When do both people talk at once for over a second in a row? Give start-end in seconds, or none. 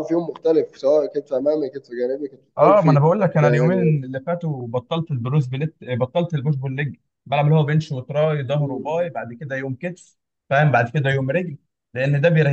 2.6-4.0